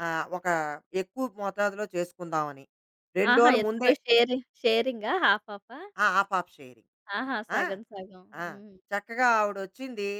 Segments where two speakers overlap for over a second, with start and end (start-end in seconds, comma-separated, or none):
none